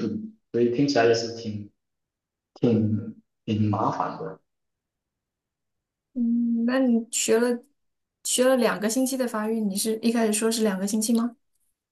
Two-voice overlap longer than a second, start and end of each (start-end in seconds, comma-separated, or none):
none